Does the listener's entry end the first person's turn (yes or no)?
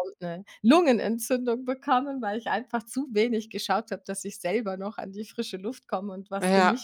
yes